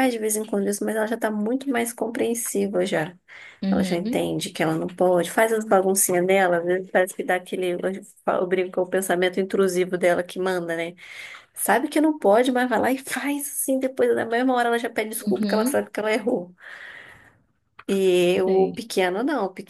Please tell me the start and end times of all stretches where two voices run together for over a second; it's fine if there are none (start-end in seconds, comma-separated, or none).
none